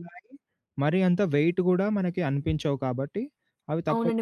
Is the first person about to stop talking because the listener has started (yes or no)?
yes